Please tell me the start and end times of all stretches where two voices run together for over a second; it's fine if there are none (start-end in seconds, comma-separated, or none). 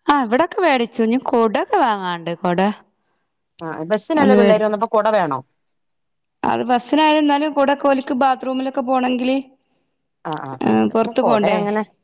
none